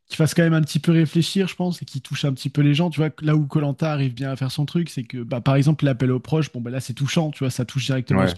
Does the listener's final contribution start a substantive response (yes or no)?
no